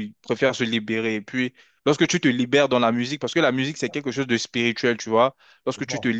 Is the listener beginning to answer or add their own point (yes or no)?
no